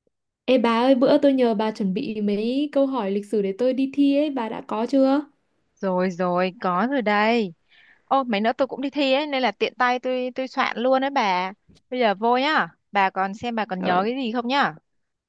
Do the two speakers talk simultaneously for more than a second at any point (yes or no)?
no